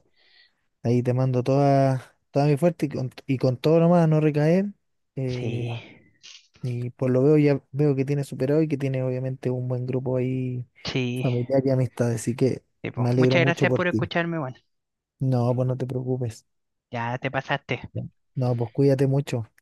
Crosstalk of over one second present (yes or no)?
yes